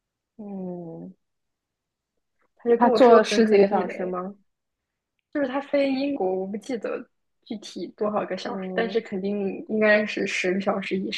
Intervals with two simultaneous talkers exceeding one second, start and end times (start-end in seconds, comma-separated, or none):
2.8-4.2